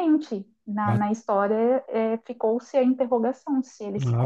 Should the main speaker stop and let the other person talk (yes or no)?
yes